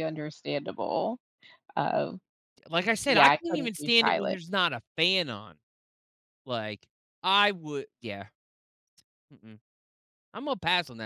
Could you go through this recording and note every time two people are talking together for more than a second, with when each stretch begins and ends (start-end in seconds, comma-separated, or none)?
3.0-4.4